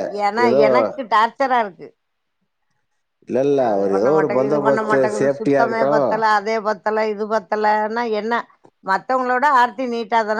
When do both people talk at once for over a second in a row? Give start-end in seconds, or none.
3.6-5.9